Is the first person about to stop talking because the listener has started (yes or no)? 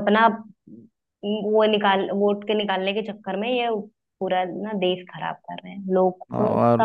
yes